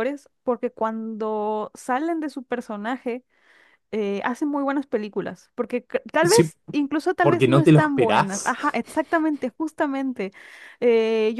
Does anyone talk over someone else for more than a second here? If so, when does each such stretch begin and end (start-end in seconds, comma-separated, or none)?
7.2-8.6